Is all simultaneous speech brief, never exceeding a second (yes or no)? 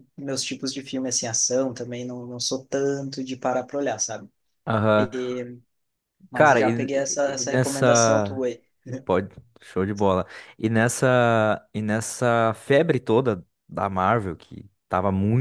no